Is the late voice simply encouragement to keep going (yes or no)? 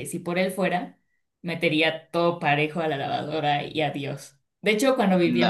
yes